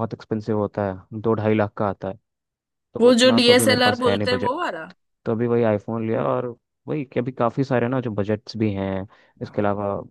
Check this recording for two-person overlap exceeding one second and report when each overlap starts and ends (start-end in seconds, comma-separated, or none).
3.0-4.5